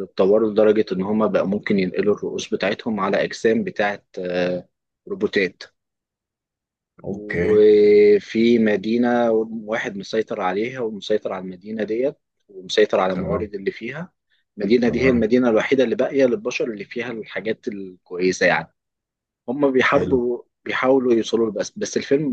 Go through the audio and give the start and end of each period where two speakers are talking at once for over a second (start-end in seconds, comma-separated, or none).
none